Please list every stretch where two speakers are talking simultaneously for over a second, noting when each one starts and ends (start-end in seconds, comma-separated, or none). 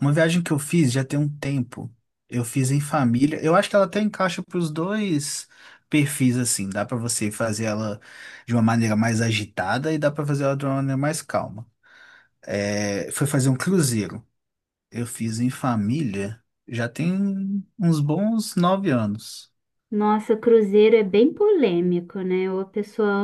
none